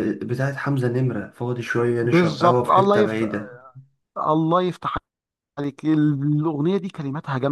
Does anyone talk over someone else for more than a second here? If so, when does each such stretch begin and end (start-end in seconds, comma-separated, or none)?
2.0-3.3